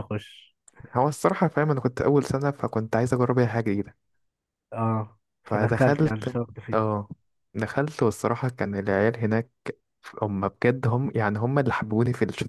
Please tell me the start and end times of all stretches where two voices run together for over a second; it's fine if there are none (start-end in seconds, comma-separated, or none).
5.5-7.0